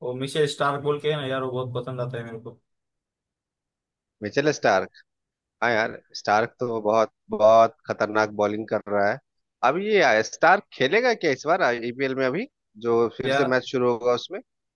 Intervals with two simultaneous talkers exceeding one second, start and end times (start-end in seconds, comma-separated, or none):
none